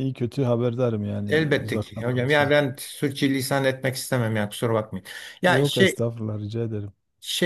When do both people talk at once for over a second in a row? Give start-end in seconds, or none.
1.3-2.5